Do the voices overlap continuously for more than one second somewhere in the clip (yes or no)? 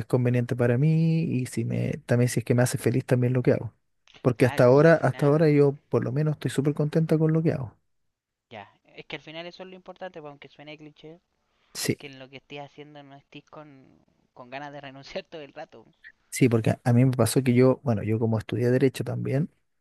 yes